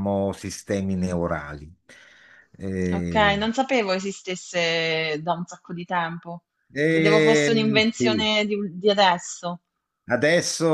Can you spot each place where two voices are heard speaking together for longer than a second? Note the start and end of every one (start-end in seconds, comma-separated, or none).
6.9-8.3